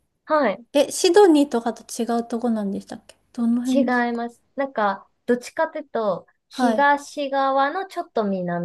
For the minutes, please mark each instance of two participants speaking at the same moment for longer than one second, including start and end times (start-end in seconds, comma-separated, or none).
none